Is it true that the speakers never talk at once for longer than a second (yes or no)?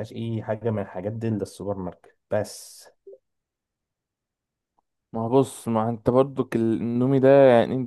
yes